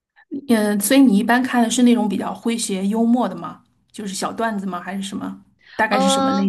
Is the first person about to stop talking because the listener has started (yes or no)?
yes